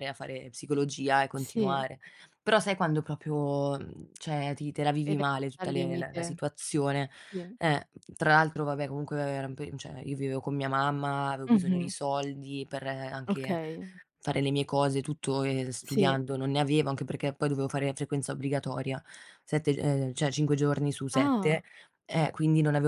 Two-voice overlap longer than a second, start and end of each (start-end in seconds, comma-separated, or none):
5.0-6.4